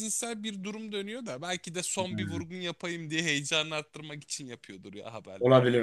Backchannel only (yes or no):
no